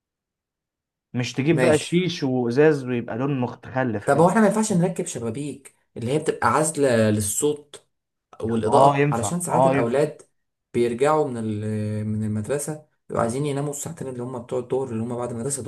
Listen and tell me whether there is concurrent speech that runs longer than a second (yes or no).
yes